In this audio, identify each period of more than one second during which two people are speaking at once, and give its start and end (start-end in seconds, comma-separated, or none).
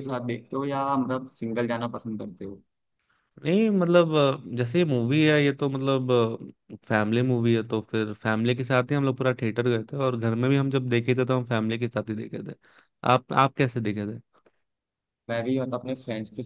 none